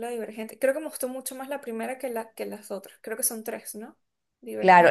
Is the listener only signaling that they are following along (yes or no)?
no